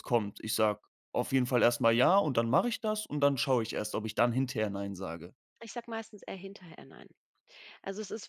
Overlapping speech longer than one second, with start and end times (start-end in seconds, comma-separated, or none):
none